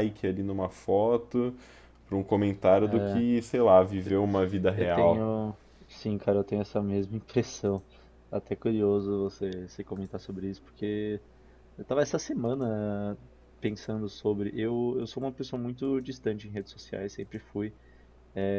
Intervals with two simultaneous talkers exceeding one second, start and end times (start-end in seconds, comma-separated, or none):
none